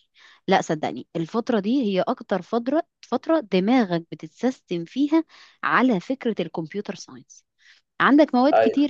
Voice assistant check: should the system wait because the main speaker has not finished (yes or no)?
yes